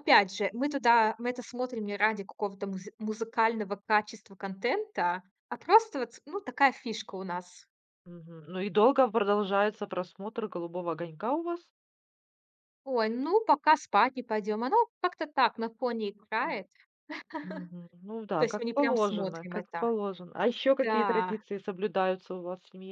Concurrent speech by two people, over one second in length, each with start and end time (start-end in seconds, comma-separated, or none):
18.4-19.9